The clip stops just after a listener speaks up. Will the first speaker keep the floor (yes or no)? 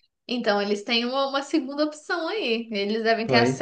yes